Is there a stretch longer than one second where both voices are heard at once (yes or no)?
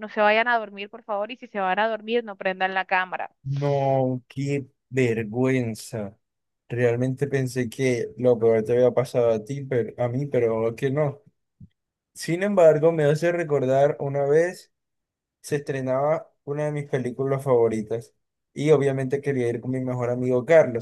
no